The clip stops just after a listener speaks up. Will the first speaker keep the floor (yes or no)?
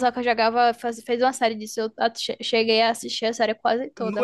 no